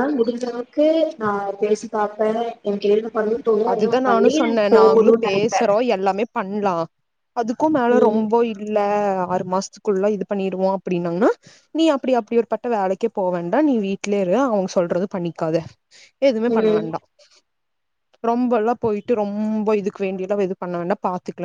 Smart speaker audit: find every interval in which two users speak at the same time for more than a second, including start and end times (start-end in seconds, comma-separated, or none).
3.7-5.6